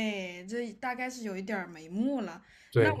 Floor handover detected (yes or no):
no